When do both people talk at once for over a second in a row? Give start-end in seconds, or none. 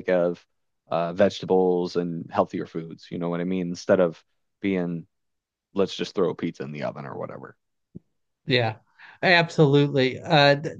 none